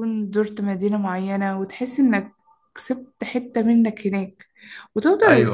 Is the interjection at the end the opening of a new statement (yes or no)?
no